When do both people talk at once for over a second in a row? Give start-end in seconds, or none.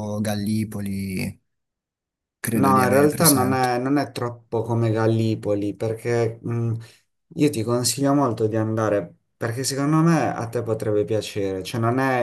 2.5-3.8